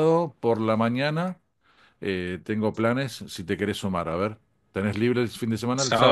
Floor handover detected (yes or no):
yes